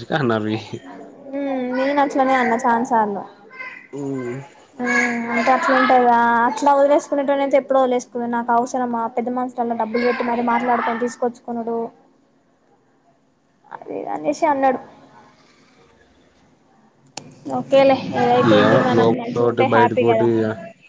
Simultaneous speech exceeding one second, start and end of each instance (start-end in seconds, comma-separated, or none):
18.6-20.3